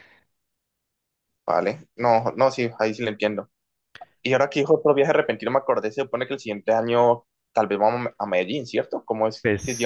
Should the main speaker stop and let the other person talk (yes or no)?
yes